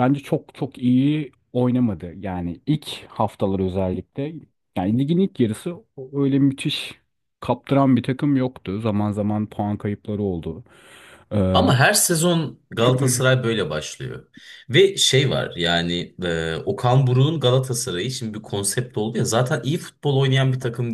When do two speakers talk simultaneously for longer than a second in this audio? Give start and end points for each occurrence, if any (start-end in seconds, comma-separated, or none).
none